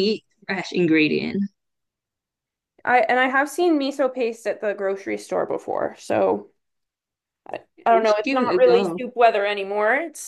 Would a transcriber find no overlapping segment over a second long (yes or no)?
no